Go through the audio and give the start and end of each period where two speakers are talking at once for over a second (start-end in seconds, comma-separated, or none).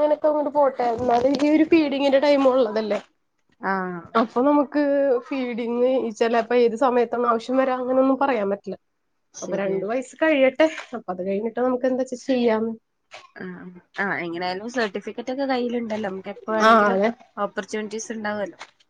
none